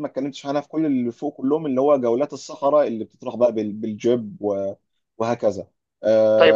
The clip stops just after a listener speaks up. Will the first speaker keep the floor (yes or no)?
no